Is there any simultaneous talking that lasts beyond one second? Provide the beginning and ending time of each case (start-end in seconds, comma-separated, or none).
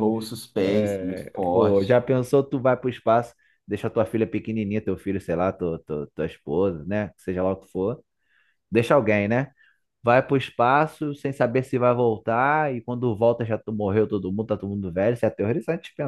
0.6-2.0